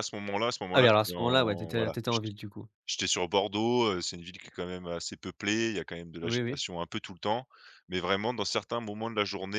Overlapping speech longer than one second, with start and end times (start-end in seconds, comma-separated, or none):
0.7-2.3